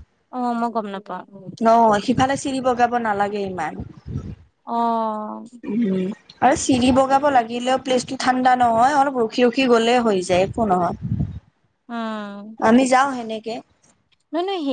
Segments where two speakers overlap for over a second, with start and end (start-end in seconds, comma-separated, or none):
none